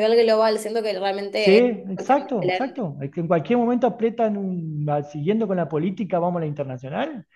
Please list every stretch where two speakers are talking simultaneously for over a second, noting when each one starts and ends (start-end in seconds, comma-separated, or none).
1.4-2.8